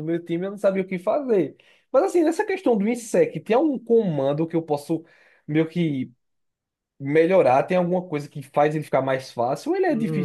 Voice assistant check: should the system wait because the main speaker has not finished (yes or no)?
no